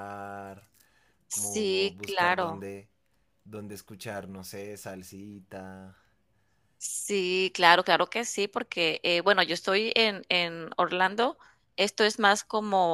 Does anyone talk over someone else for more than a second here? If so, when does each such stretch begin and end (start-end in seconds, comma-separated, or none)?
1.3-2.7